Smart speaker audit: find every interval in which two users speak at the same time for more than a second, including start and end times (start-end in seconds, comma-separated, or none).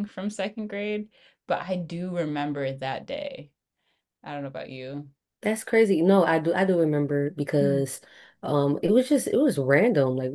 none